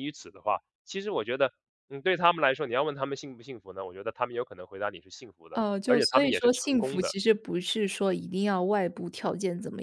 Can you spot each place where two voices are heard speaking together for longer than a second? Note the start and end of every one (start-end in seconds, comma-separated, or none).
5.5-7.2